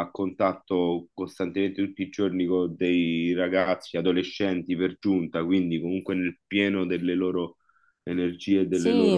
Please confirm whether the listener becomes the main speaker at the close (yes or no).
yes